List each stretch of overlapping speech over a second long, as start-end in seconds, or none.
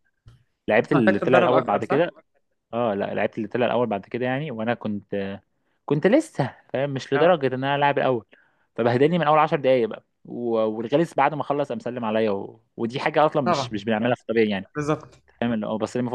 0.8-2.1